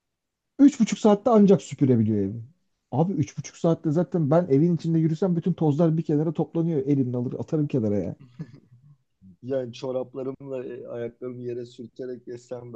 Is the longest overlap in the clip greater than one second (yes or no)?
no